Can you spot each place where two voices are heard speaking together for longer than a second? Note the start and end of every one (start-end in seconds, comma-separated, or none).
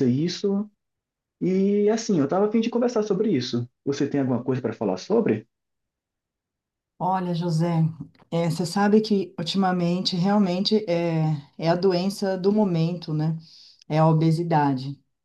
none